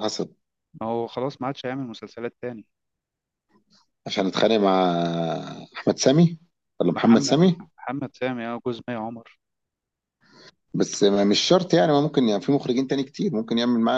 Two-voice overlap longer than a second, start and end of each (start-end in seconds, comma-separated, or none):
none